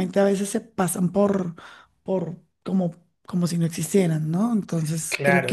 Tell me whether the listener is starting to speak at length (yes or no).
yes